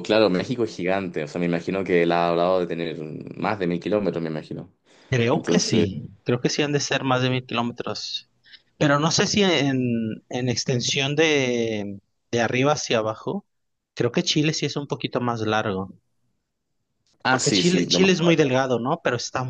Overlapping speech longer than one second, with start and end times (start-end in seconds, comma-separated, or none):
17.3-18.6